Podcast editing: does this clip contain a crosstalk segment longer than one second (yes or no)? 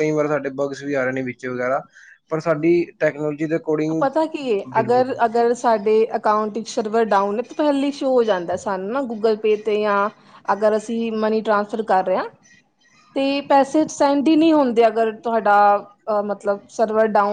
no